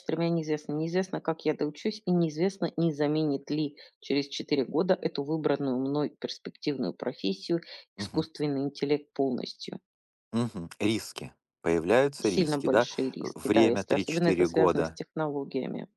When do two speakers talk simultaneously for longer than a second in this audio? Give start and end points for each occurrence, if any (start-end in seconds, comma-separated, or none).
12.2-15.0